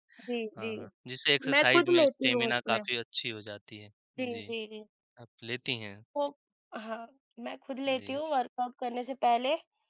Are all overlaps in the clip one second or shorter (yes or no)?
no